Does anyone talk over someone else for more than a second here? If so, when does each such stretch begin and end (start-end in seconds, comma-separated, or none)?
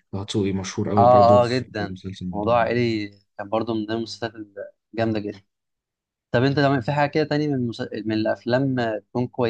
1.0-2.8